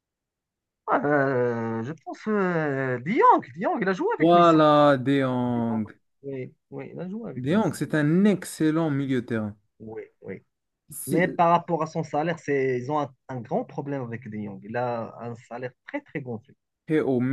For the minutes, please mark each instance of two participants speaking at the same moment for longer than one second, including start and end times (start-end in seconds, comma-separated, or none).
none